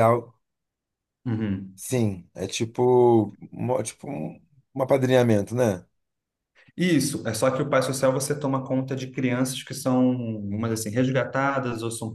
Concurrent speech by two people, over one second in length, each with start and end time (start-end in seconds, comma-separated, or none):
none